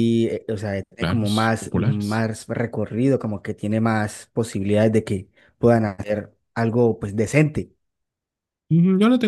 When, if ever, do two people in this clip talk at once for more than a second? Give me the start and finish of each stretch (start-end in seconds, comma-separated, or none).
1.0-2.2